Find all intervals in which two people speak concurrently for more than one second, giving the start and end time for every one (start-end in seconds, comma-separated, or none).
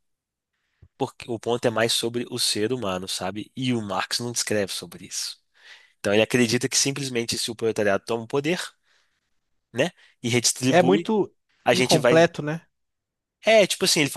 none